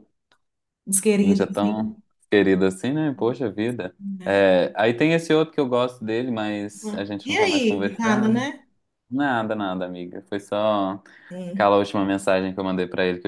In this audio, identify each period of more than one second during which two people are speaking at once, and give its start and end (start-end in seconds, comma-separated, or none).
7.2-8.4